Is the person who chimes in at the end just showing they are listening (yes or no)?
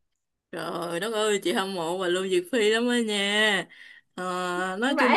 yes